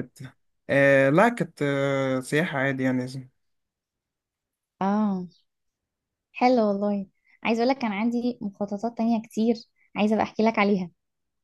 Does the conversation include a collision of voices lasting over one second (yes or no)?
no